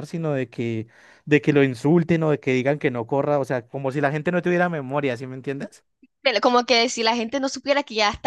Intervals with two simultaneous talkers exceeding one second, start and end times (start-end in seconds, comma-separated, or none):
none